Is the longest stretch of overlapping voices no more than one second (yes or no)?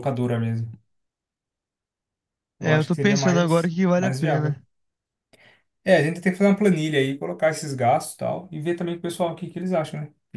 no